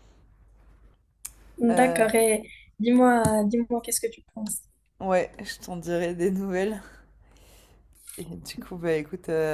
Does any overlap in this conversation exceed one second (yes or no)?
no